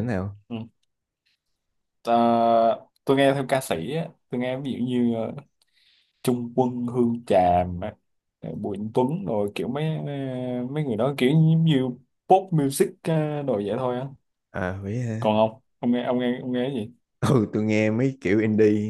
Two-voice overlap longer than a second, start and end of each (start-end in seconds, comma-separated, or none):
none